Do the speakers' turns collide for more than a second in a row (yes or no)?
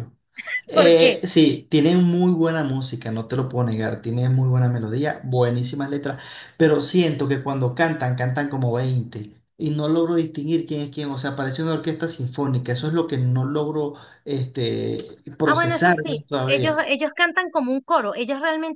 yes